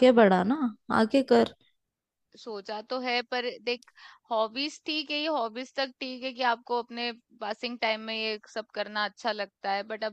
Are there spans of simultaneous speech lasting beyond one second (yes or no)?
no